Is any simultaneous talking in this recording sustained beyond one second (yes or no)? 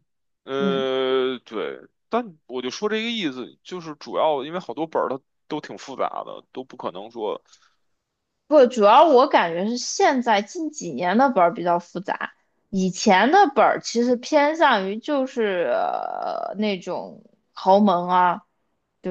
no